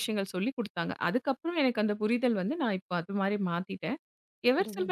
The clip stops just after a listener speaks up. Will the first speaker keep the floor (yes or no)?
yes